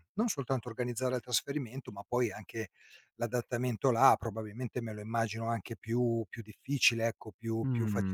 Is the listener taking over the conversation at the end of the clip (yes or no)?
yes